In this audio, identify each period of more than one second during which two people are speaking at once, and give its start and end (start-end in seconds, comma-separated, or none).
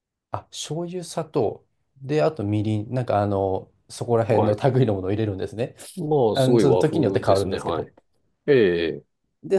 6.3-7.9